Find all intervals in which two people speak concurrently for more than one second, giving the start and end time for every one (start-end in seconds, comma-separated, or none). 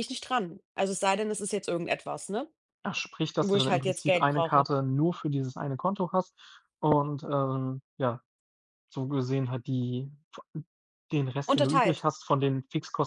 3.4-4.7